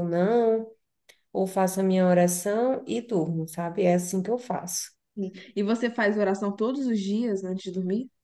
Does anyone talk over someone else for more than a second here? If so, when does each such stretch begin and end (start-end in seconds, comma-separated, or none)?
none